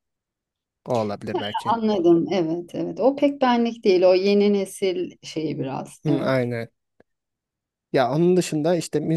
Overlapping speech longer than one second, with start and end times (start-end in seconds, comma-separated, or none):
none